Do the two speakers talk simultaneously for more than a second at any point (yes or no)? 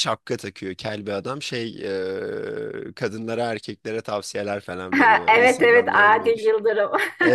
yes